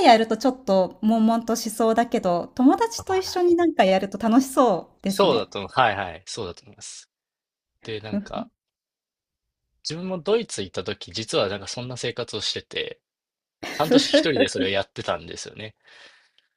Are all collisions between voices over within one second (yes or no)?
yes